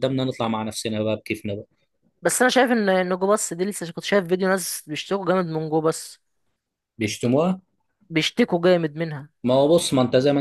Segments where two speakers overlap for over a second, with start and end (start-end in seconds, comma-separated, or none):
none